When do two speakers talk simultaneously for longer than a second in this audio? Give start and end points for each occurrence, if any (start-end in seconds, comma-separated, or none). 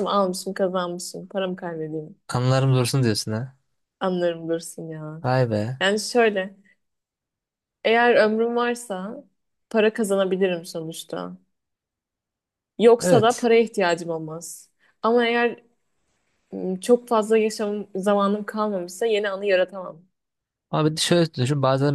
none